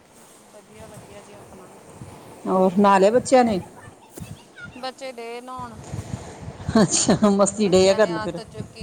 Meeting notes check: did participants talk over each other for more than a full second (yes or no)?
no